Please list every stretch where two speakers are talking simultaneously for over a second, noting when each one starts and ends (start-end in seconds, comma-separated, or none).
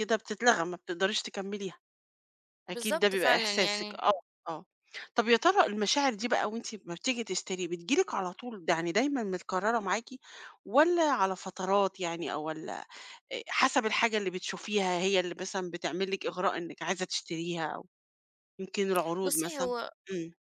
2.7-4.0